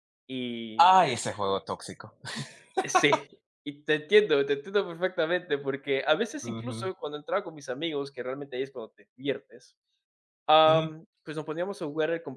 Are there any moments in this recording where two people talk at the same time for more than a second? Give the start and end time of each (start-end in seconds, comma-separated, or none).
none